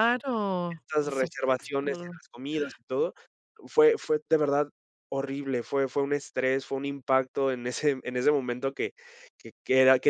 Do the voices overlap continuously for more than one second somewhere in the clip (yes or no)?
yes